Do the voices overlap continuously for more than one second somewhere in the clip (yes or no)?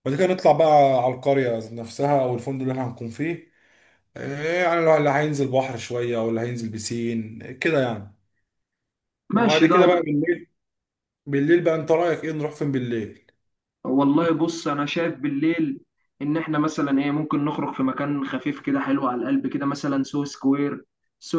no